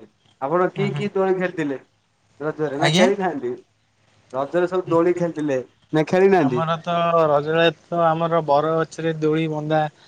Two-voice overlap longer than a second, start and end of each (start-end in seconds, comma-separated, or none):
none